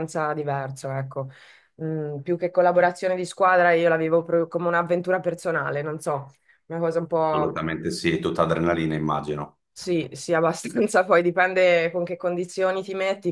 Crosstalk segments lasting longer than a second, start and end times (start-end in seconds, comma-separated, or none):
none